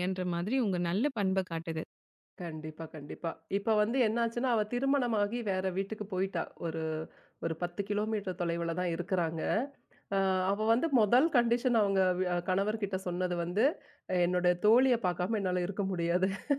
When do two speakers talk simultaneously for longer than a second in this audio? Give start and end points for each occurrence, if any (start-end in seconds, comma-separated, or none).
none